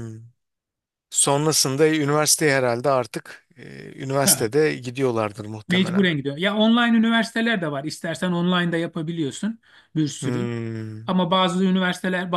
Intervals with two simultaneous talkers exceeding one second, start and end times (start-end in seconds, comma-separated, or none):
none